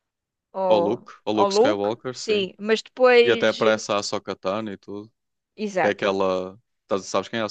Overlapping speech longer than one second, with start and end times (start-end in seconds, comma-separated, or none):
0.7-2.5